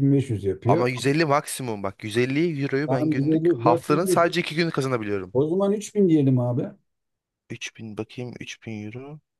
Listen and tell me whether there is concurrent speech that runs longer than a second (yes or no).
yes